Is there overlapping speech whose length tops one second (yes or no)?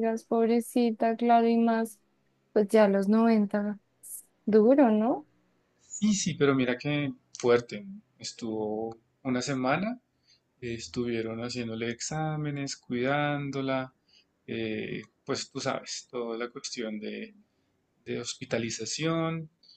no